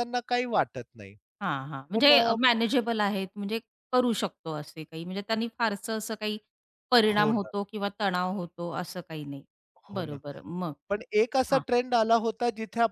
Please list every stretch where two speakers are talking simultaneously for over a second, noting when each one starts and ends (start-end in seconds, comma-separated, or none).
none